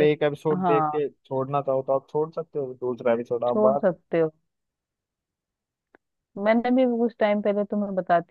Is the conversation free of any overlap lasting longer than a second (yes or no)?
yes